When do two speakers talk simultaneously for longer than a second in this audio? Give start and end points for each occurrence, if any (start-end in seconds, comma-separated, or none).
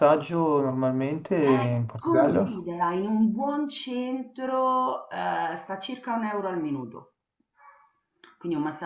1.4-2.7